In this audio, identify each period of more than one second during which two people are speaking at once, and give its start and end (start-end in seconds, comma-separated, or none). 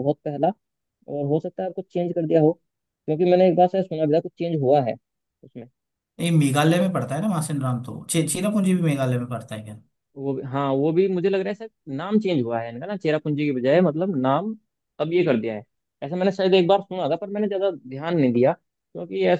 none